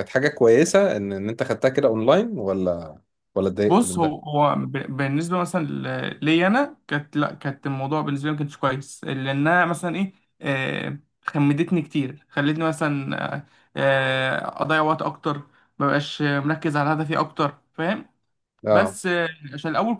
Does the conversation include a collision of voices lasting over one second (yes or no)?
no